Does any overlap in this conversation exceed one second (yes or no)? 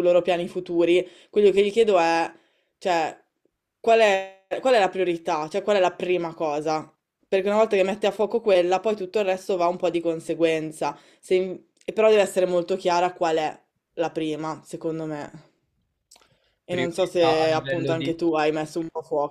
yes